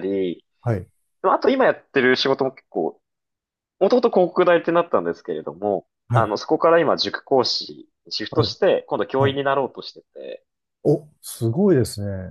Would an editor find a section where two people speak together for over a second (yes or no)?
no